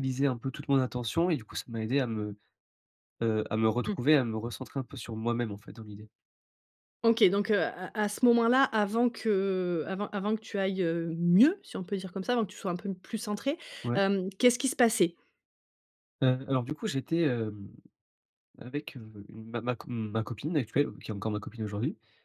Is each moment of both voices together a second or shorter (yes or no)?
yes